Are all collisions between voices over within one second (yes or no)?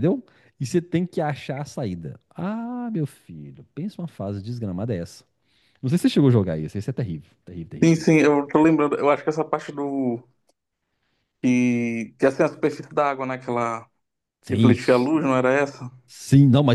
yes